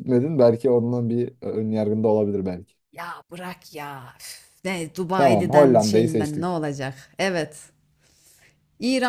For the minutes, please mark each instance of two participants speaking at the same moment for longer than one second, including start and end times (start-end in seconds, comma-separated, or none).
5.2-6.6